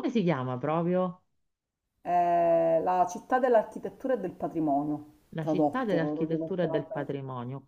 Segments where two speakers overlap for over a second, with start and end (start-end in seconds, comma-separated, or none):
5.3-7.1